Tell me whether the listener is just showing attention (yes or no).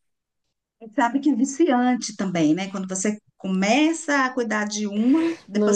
no